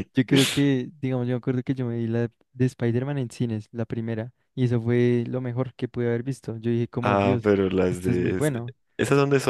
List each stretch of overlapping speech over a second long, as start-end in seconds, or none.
7.0-8.5